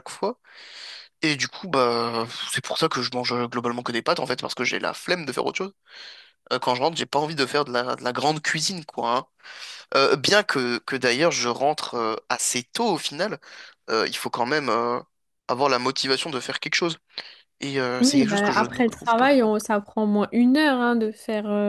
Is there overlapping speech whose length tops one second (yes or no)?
yes